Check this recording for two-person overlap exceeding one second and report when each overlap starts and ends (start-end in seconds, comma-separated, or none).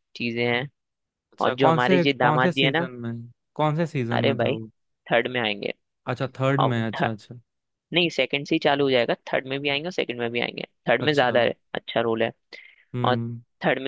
1.4-2.9